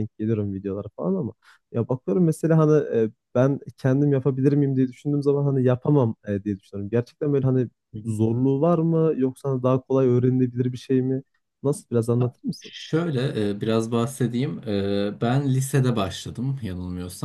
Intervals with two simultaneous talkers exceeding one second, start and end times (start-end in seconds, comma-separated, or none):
none